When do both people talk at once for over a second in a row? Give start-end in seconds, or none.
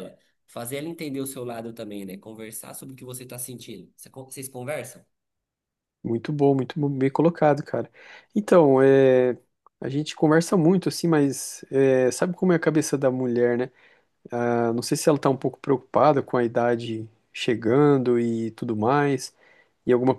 none